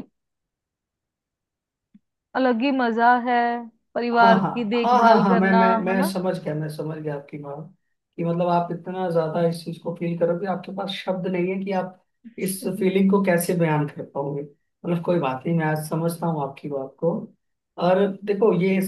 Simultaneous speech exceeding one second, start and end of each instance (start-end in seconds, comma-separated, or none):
4.2-6.1